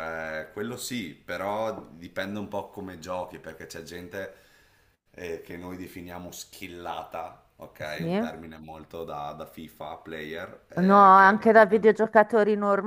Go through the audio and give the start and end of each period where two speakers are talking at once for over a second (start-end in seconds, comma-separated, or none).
10.8-12.0